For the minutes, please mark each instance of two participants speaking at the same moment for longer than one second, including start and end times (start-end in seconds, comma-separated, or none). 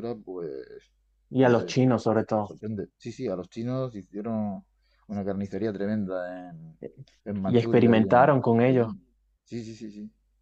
7.5-8.9